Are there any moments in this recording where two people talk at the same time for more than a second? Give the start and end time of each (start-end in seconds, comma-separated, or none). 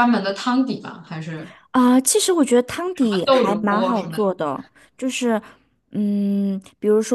2.9-4.2